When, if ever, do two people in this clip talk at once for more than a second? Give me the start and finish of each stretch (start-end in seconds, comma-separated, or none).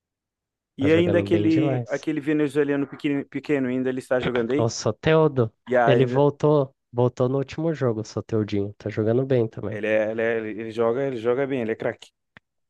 0.8-2.1